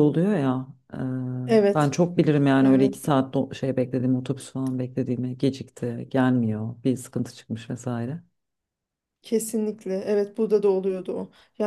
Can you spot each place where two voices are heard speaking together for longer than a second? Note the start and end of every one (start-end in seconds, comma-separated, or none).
none